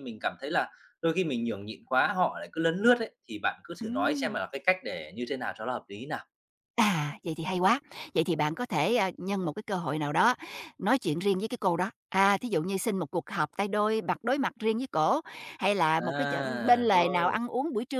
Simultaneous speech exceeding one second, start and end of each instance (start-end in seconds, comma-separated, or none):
16.0-17.4